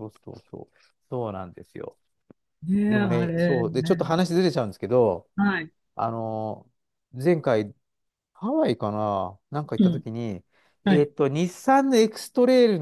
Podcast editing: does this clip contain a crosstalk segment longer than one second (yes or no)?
yes